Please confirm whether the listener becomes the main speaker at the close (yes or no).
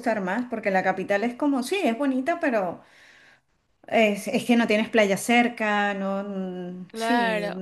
yes